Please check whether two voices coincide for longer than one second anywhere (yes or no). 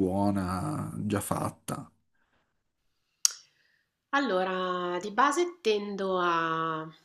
no